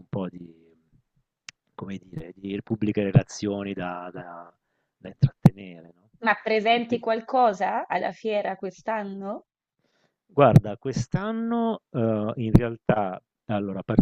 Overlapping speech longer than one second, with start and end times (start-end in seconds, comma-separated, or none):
none